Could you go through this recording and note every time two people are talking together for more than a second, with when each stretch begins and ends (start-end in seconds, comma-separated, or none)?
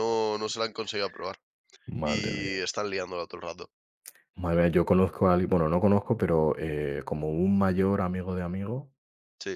none